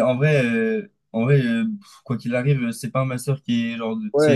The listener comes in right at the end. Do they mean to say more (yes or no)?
yes